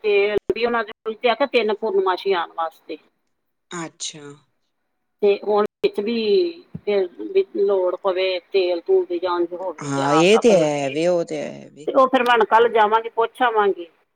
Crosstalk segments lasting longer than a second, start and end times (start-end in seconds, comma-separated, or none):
9.9-11.9